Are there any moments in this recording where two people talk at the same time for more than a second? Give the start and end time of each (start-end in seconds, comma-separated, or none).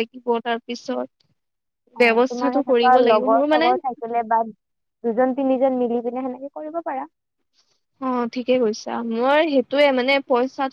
2.0-3.7